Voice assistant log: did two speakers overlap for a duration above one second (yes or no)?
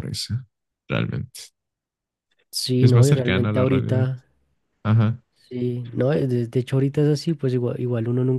yes